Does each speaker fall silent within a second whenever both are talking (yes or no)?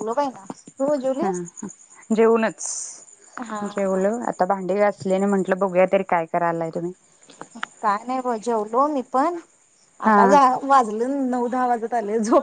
yes